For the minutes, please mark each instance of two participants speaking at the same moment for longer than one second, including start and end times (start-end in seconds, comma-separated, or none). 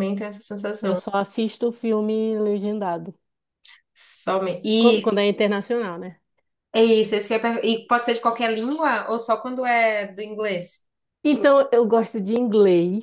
none